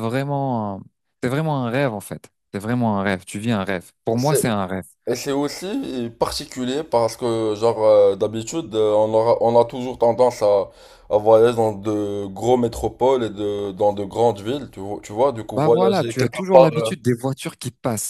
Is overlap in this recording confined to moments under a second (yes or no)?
no